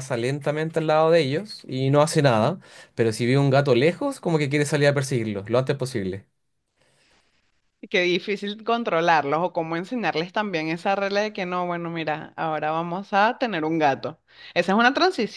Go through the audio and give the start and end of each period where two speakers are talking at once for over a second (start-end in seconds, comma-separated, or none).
none